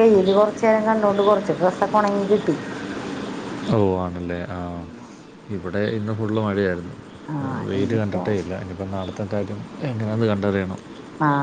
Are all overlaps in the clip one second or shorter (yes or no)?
yes